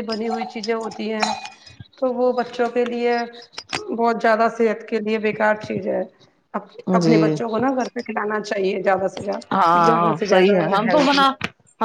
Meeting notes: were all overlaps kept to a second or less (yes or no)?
no